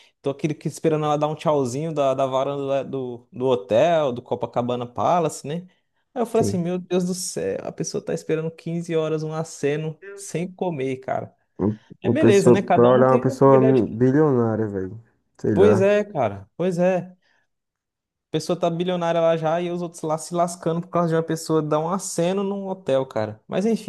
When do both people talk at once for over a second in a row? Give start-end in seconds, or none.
12.0-13.8